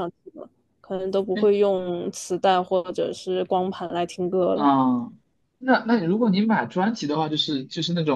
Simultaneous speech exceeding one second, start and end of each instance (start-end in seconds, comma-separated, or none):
none